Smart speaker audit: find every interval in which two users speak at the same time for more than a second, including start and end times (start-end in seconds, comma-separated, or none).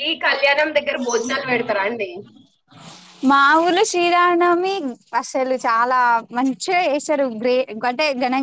none